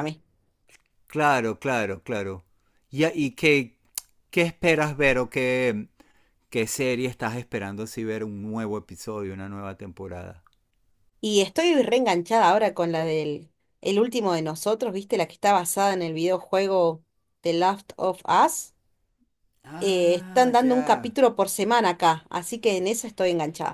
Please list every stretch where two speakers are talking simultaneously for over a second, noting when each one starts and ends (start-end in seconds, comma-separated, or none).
19.8-21.1